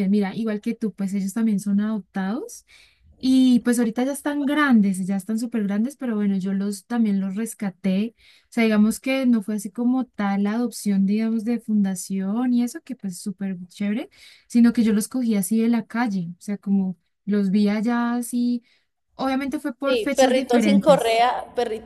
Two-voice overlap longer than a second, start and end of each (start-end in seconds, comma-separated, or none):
19.9-21.2